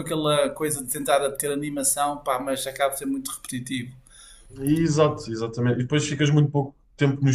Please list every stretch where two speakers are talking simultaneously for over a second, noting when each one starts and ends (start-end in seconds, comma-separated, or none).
none